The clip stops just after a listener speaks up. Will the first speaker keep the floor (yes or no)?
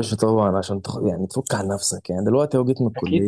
yes